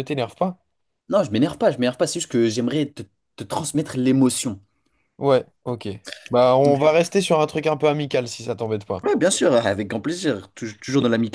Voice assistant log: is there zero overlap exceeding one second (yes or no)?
yes